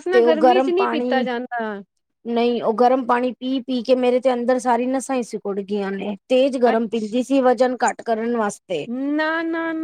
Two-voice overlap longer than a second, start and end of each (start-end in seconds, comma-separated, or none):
none